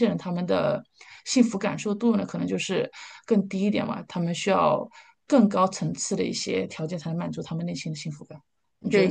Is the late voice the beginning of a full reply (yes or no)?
yes